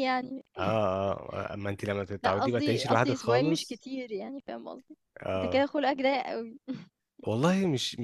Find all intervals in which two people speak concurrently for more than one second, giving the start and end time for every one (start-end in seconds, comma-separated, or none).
2.2-3.8